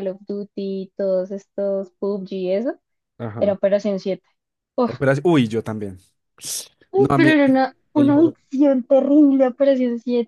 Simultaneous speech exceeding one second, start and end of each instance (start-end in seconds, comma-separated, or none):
none